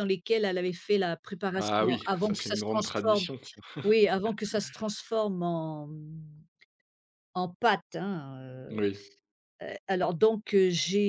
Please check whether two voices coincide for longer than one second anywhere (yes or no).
yes